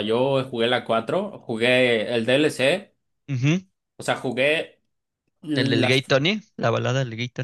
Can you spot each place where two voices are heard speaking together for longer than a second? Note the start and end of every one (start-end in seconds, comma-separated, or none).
none